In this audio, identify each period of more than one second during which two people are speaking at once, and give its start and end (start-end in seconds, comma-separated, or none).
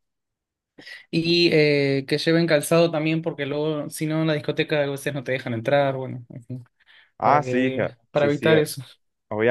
7.2-8.6